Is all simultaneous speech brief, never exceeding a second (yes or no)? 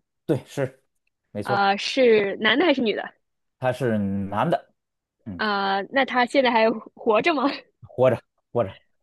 yes